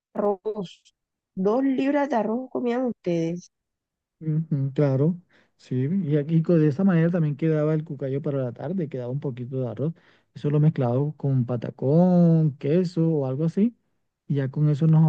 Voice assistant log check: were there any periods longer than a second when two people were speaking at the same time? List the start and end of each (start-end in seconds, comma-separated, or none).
none